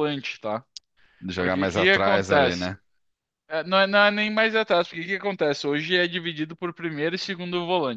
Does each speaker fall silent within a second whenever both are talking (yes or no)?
no